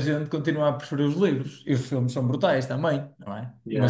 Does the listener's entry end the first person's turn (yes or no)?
no